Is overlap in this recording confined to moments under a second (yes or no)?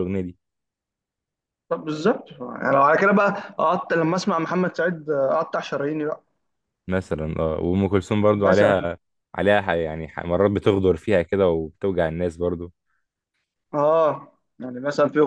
yes